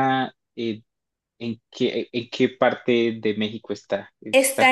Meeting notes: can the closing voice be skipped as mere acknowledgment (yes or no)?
no